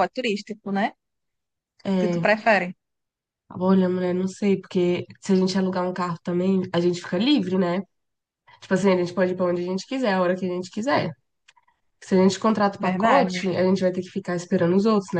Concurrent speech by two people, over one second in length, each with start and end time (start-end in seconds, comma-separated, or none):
none